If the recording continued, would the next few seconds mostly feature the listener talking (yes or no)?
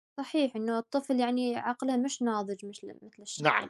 yes